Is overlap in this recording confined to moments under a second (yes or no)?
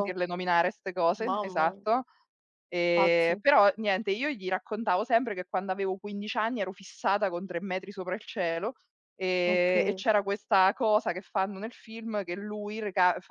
yes